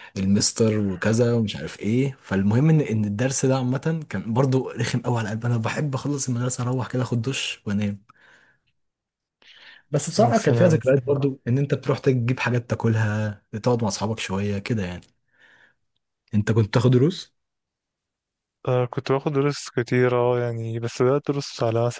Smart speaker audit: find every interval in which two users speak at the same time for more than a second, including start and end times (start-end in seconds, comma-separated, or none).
10.2-11.4